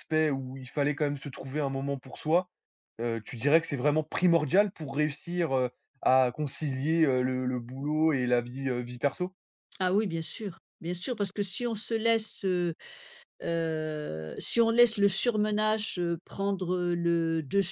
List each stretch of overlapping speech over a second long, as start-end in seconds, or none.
none